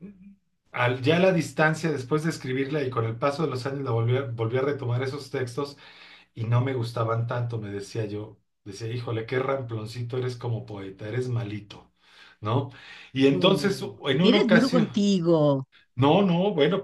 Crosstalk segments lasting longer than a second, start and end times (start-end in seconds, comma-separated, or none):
13.3-15.0